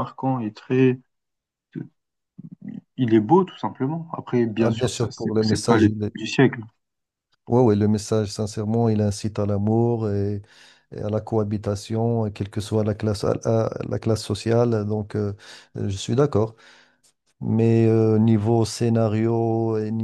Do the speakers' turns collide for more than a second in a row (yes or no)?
yes